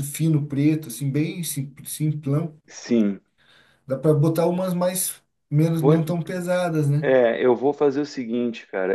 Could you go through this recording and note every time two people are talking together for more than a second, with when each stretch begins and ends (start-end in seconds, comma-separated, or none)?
none